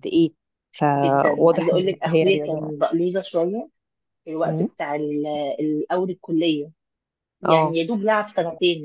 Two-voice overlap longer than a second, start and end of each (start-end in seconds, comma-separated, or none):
1.0-2.7